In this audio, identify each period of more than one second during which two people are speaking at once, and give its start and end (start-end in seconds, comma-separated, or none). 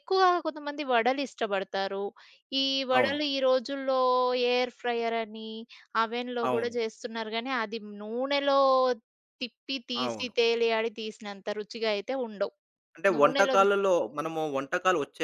none